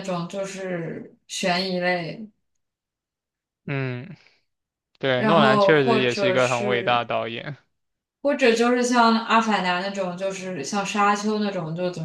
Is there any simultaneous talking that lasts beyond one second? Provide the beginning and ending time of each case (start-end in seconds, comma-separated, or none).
5.2-7.0